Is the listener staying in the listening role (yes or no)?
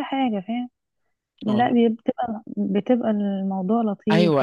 no